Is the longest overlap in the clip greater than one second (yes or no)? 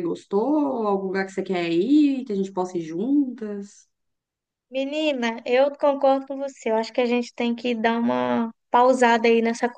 no